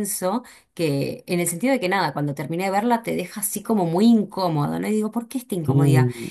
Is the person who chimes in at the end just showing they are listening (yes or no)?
yes